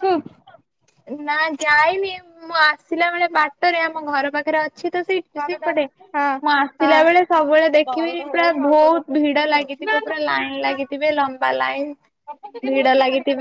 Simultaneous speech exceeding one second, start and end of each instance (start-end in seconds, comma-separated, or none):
7.8-9.7